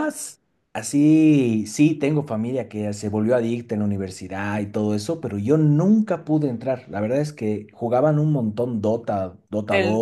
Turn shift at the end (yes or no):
yes